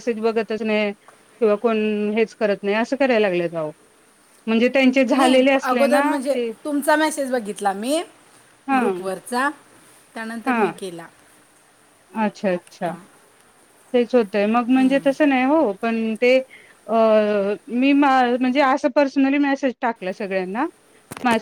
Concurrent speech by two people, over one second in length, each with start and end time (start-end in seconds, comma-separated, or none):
none